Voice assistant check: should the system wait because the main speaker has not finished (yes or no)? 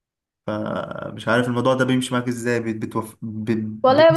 no